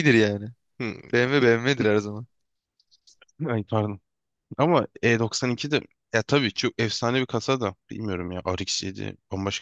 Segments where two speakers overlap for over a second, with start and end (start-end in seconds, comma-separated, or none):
none